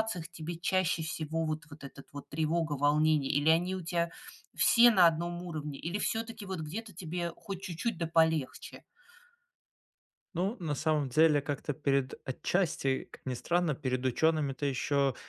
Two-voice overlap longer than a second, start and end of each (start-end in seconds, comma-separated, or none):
none